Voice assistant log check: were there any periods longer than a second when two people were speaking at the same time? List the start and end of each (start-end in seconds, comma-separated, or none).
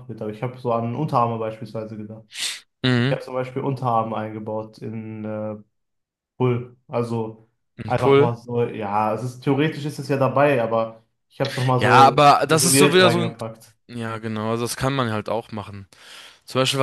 11.8-13.4